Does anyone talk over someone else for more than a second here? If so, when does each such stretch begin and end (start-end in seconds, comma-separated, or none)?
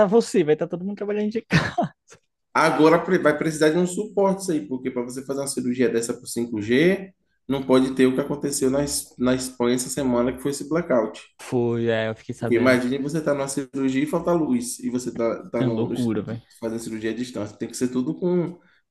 none